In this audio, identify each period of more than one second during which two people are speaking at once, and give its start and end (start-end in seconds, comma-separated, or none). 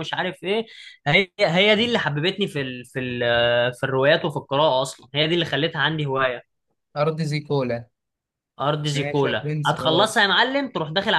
8.9-10.2